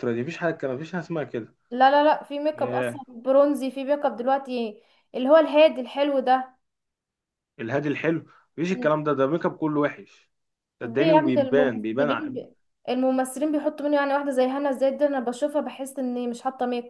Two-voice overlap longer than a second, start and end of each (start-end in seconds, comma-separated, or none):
10.8-12.3